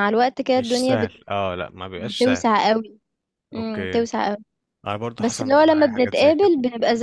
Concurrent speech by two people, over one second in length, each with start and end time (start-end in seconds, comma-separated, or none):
5.2-6.5